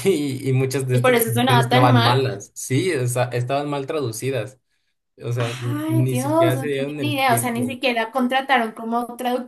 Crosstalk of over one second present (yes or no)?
yes